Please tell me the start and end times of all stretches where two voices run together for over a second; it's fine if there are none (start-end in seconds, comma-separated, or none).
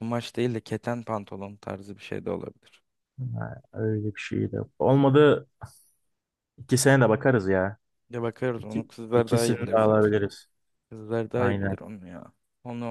8.6-10.1